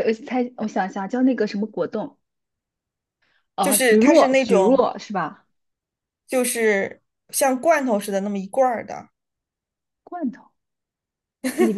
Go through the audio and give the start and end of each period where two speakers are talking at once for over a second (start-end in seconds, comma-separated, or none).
3.6-4.9